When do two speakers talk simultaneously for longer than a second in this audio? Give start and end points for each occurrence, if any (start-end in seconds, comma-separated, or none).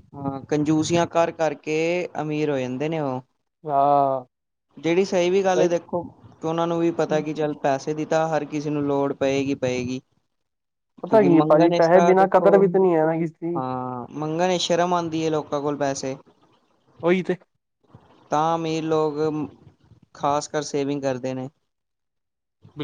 11.1-12.5